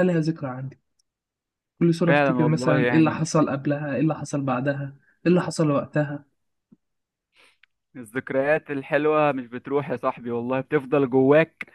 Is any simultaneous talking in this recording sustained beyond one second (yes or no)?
yes